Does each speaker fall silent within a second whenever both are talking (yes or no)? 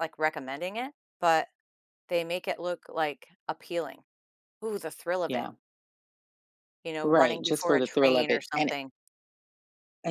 no